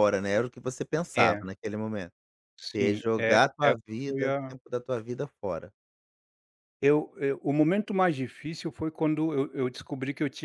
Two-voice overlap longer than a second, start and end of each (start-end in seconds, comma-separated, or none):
2.7-4.5